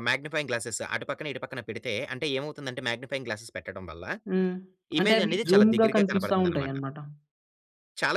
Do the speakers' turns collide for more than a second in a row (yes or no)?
yes